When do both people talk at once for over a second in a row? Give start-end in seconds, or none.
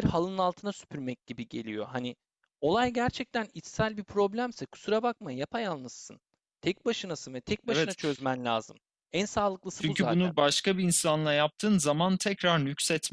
none